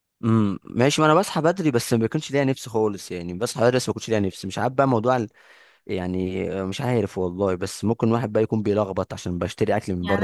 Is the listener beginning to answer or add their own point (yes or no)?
yes